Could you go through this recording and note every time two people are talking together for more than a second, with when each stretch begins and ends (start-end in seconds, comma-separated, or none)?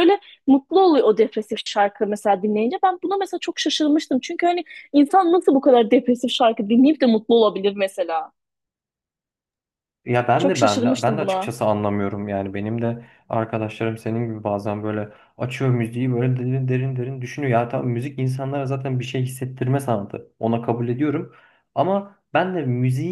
10.4-11.6